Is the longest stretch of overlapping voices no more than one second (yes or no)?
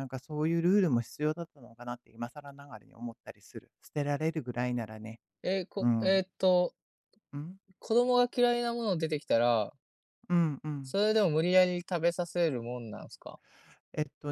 yes